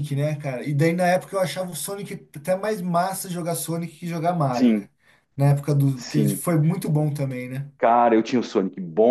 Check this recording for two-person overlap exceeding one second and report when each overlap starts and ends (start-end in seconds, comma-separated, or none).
none